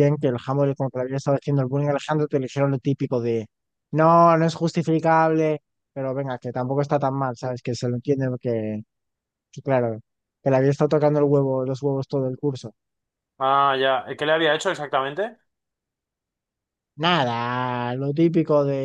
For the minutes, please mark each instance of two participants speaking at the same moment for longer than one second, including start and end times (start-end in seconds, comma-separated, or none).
none